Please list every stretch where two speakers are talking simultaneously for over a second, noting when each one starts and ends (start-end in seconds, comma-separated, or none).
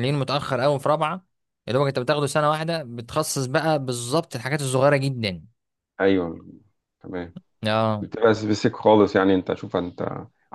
none